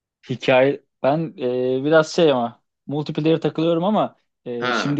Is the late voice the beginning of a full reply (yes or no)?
no